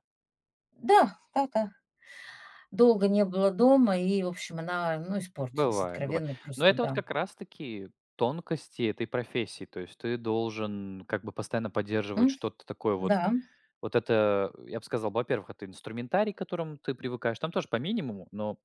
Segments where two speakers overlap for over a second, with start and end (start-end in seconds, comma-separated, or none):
5.5-7.0